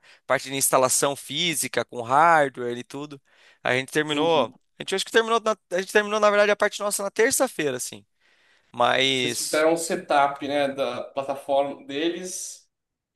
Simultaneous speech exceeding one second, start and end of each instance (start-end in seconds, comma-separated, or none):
none